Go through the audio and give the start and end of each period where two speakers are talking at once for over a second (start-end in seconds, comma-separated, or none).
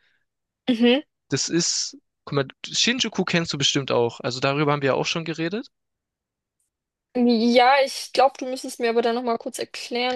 none